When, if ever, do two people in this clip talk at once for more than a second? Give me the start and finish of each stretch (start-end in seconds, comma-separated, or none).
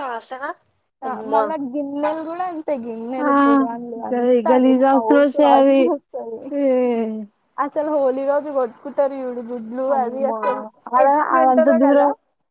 4.1-5.8